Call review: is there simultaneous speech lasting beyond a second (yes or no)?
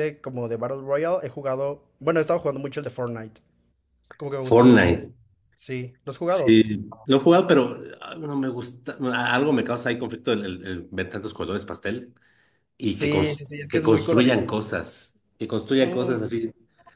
yes